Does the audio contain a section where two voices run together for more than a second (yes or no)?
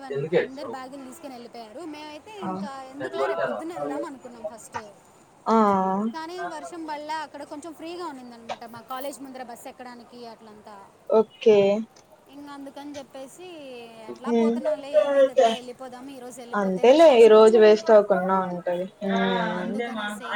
yes